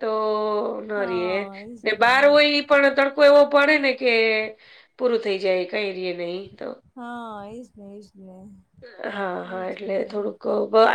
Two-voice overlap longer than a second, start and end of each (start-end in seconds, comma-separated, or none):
none